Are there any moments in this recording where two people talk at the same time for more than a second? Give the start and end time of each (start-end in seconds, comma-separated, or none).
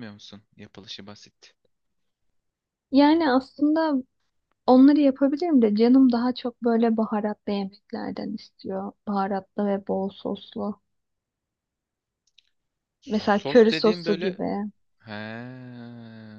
13.1-14.4